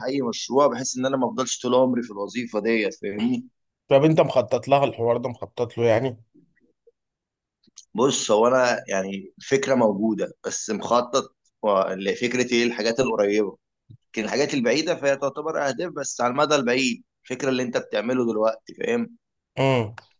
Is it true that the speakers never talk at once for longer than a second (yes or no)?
yes